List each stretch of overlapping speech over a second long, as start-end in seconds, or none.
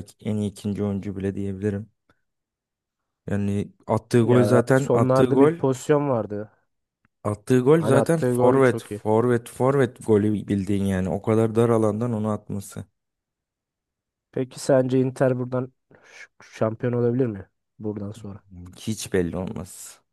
4.2-5.5, 7.7-9.0